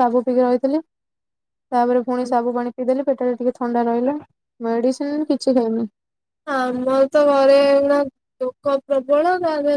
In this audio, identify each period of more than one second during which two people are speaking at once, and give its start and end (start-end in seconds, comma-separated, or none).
none